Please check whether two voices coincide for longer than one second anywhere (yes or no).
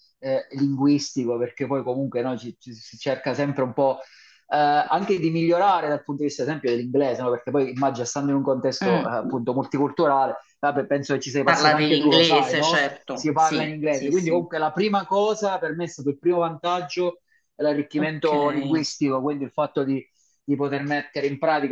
yes